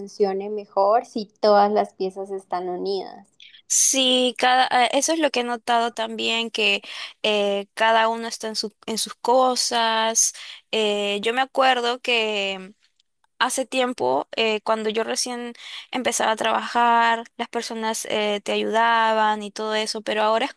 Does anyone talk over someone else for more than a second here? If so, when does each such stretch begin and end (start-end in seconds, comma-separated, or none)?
none